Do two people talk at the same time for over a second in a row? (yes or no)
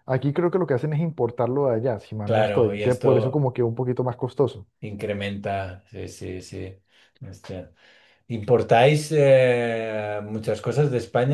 yes